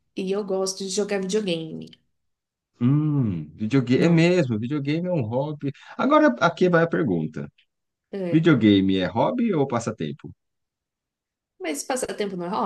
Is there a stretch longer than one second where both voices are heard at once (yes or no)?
no